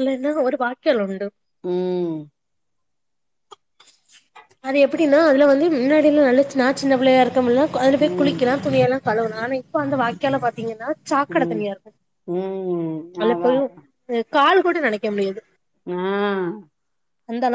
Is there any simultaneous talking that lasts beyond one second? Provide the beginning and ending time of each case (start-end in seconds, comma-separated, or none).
none